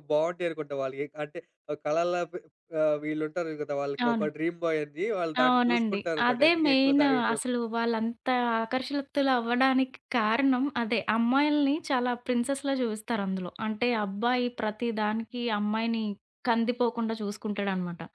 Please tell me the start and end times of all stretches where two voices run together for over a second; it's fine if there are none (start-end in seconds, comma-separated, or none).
5.4-7.5